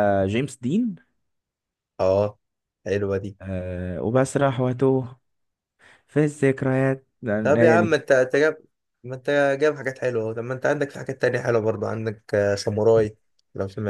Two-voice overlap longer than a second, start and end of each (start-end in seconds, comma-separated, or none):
none